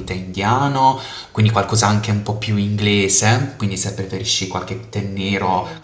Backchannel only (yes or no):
yes